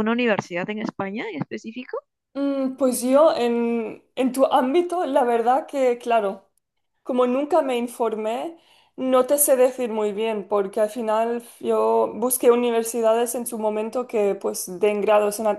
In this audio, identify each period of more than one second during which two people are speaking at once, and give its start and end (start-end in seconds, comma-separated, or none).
none